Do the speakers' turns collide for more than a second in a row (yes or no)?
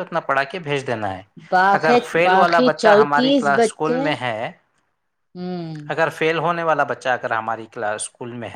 yes